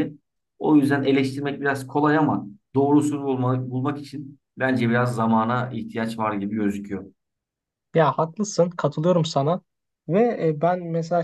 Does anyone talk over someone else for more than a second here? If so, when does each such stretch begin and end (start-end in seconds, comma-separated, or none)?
none